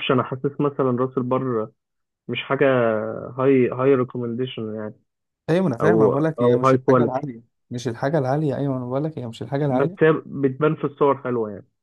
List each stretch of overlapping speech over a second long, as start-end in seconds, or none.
5.8-7.2